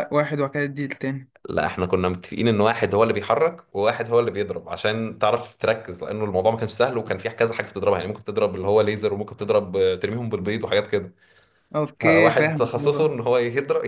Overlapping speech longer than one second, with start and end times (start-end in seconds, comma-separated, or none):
12.0-13.2